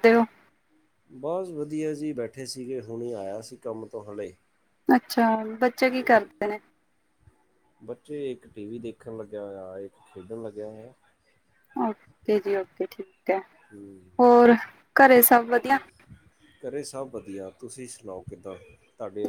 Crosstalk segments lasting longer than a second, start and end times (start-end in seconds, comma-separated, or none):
none